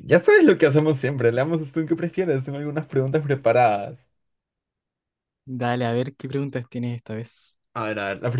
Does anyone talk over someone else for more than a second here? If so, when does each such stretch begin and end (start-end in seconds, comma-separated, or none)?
none